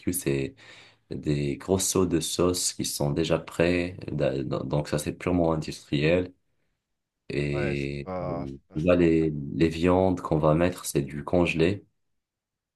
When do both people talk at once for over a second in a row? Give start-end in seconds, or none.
7.5-9.0